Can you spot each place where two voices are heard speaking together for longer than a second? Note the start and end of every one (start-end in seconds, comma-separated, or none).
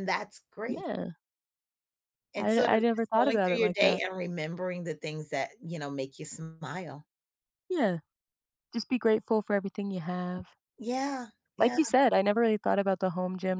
2.4-4.0